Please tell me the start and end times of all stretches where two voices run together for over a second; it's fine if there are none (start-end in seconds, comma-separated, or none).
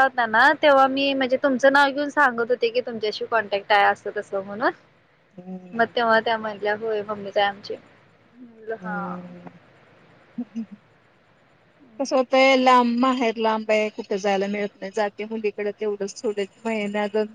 none